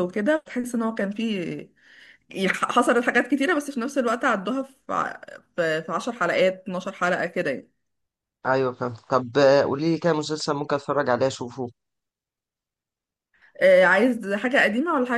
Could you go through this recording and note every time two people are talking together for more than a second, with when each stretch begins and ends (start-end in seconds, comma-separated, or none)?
none